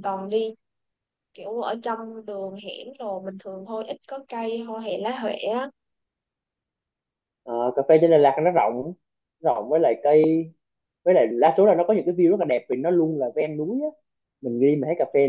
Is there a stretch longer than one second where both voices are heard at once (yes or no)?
no